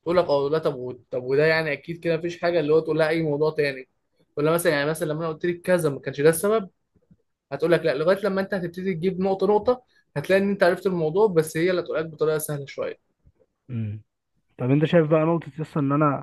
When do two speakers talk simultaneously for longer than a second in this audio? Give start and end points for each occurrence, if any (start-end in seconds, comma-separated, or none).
none